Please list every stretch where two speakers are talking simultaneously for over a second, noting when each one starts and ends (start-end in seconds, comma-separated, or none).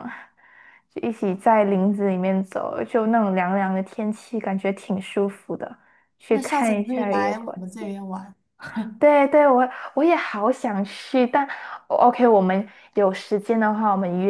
6.3-7.9